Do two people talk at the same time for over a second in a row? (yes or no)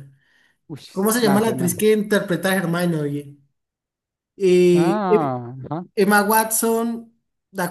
no